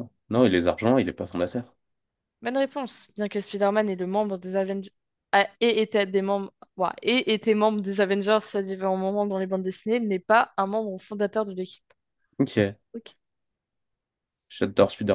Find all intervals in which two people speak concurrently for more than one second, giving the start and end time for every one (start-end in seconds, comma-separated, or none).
none